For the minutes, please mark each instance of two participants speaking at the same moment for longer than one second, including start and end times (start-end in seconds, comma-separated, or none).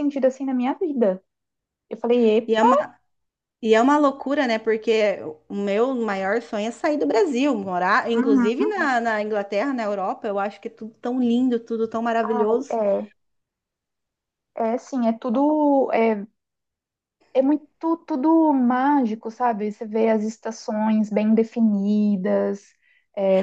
none